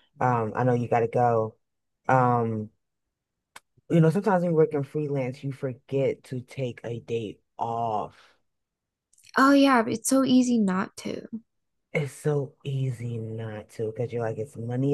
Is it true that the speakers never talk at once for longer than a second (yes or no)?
yes